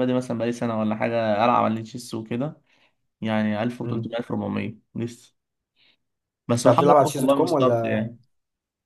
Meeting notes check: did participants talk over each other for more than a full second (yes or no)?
yes